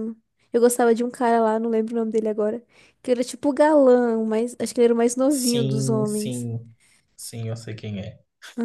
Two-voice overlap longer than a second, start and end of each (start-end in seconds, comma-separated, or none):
5.3-6.5